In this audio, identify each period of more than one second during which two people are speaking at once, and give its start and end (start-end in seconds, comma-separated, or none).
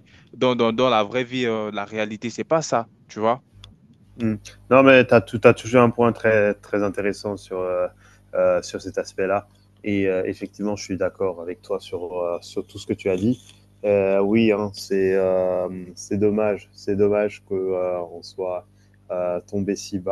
none